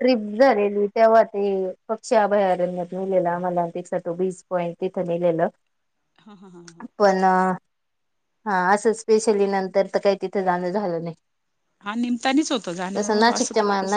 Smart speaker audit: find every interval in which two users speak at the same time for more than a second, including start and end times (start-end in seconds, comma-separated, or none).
none